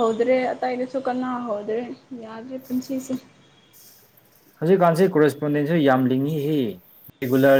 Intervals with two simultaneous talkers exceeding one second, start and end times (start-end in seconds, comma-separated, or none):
none